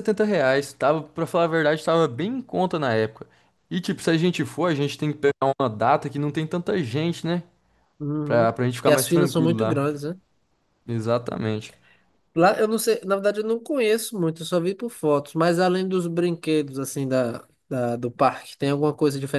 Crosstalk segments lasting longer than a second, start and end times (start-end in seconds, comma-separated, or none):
8.2-9.8